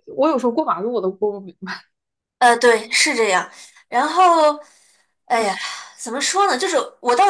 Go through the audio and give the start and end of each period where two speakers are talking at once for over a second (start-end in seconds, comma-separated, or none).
none